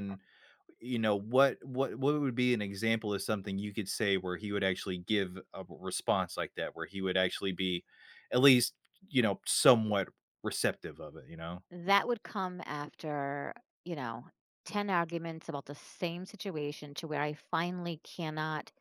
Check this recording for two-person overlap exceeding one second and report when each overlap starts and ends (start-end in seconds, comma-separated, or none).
none